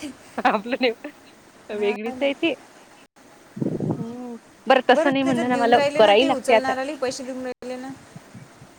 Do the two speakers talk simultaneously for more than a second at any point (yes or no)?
yes